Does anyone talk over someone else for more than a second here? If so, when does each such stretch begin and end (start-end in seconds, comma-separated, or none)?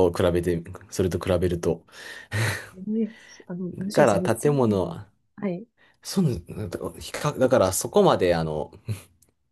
3.7-5.0